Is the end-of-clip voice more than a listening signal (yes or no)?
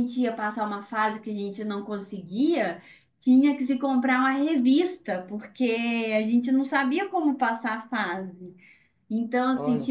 no